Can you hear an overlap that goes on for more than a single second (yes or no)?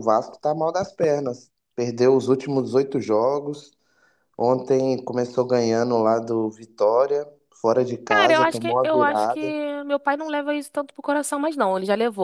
yes